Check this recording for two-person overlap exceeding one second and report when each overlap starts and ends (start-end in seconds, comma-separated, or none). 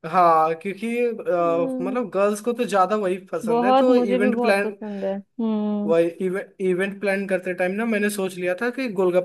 3.5-4.8